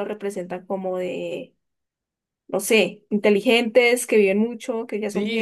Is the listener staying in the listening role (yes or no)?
no